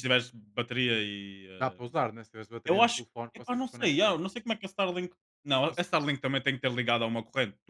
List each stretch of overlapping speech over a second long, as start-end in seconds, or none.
2.7-4.2